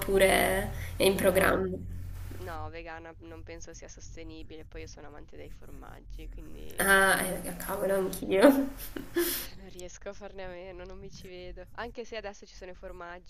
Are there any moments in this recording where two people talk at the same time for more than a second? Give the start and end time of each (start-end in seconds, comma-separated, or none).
none